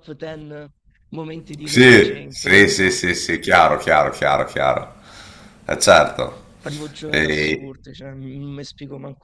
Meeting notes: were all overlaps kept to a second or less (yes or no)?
no